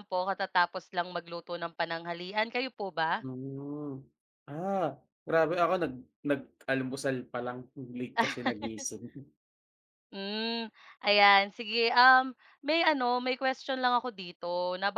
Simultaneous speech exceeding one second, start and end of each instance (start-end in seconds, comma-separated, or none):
none